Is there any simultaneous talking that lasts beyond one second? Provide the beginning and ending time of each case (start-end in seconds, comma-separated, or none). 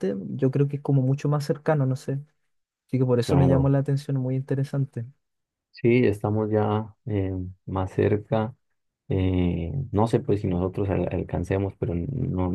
none